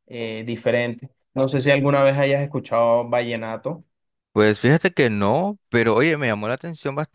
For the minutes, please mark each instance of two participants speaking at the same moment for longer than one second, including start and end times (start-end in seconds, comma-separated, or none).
none